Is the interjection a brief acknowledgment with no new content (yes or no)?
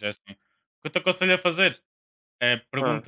yes